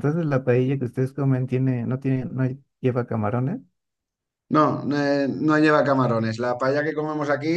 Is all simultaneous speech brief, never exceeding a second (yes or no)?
yes